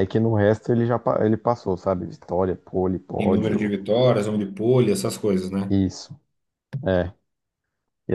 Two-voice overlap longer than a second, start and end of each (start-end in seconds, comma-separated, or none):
none